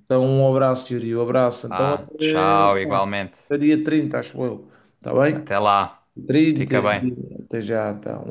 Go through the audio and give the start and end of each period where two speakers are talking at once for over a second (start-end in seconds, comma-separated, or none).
1.7-3.5